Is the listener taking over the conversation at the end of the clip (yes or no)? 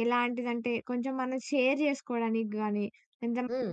no